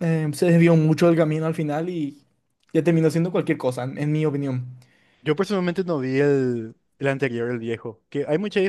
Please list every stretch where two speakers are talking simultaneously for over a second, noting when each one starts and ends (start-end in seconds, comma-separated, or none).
none